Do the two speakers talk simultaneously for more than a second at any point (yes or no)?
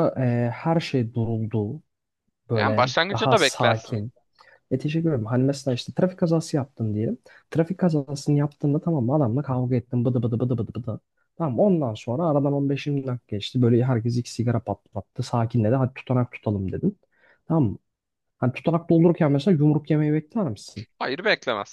yes